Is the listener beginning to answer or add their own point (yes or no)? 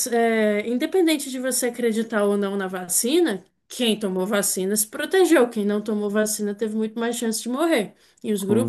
no